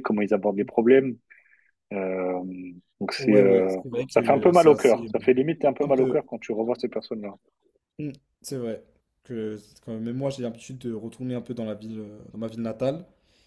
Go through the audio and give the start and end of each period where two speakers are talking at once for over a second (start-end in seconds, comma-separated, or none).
3.2-6.2